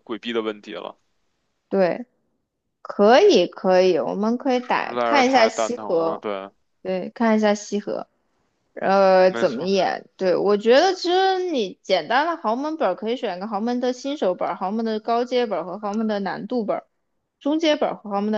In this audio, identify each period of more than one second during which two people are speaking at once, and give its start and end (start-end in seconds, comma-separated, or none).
4.5-6.2